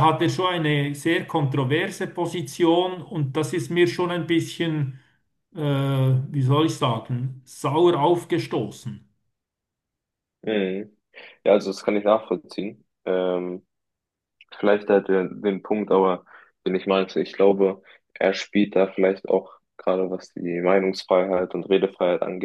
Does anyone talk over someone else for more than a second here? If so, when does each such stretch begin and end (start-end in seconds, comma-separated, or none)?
none